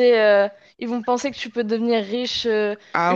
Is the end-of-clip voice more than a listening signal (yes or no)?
yes